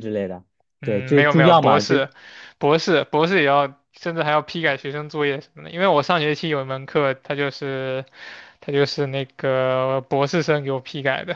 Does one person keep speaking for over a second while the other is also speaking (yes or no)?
yes